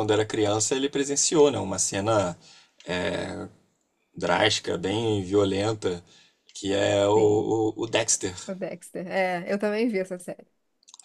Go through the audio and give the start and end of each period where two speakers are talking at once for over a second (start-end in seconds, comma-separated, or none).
none